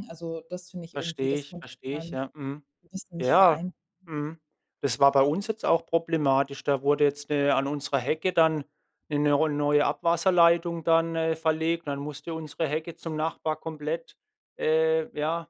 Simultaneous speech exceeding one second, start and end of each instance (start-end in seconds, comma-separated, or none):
0.9-2.2